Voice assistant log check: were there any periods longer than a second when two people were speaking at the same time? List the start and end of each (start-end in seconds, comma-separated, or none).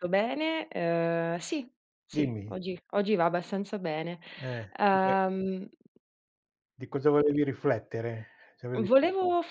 none